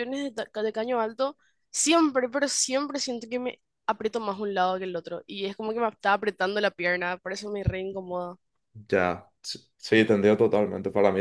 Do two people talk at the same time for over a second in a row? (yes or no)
no